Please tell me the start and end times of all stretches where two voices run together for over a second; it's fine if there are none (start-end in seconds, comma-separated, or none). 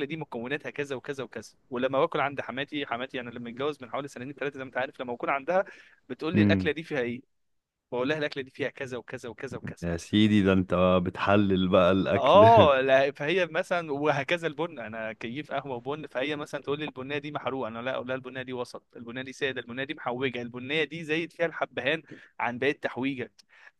none